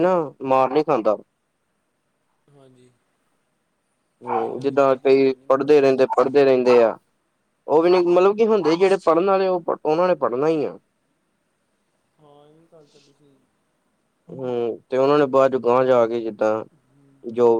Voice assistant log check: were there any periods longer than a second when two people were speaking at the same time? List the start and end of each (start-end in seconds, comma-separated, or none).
4.3-6.1